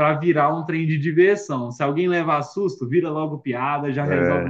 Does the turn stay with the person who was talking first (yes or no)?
yes